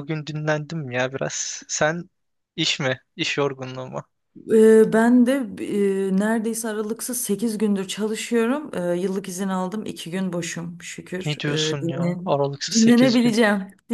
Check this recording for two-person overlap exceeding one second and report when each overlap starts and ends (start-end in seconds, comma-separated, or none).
11.2-13.3